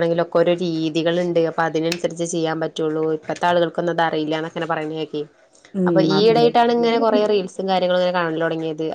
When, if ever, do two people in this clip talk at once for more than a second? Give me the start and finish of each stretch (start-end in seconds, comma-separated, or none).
5.9-7.3